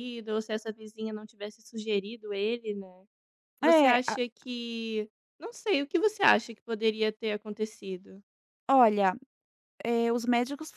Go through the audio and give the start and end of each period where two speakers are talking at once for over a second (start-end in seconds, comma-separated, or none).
none